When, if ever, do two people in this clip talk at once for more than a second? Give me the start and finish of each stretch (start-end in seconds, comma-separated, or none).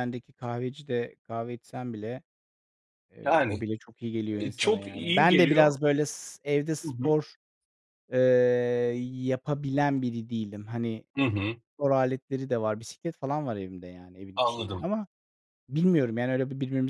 4.4-5.7